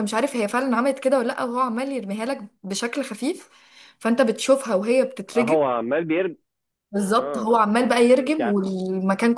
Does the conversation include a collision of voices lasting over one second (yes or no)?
no